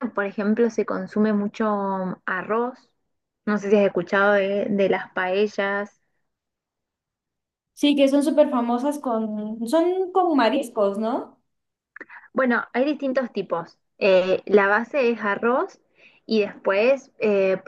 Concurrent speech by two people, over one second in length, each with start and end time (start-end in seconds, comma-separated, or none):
none